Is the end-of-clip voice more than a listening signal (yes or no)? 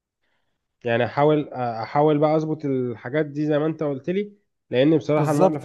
no